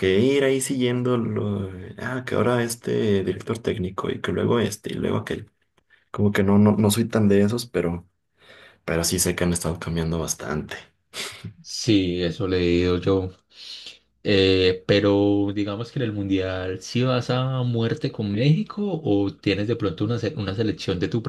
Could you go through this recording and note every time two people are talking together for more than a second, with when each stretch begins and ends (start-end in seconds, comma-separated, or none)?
none